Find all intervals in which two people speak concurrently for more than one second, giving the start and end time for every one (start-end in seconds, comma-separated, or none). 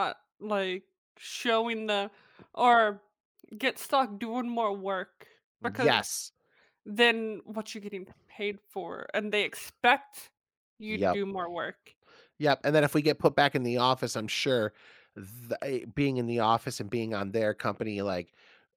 none